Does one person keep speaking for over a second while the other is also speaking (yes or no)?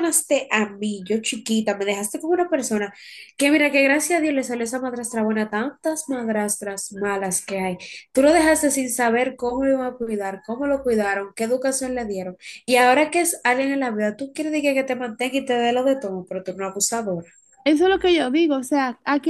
no